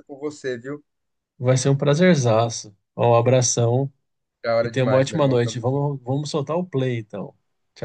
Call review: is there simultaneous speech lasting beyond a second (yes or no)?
yes